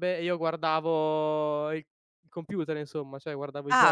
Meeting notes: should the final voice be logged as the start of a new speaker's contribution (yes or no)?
yes